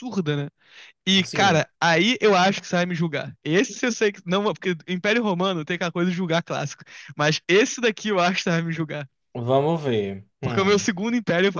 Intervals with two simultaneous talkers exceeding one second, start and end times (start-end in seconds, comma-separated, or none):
none